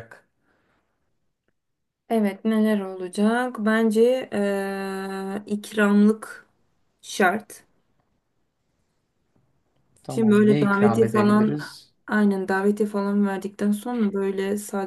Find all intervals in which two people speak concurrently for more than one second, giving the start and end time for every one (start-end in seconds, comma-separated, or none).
10.1-11.6